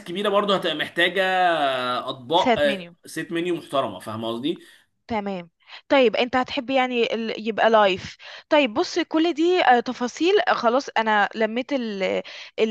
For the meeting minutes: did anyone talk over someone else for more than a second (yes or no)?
no